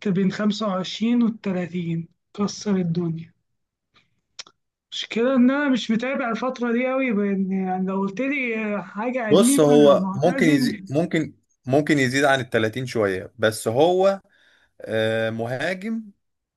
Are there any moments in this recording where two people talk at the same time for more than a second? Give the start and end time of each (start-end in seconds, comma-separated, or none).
9.3-10.8